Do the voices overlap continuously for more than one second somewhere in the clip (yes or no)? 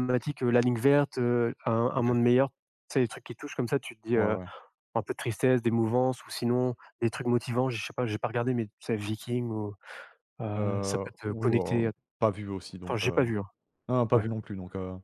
yes